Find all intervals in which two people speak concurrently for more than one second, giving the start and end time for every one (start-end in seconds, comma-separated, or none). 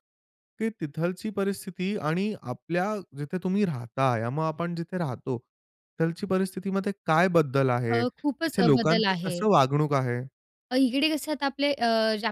7.9-9.4